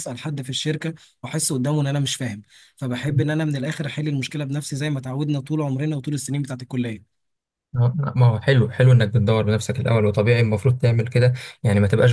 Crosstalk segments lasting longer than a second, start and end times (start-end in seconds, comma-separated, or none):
none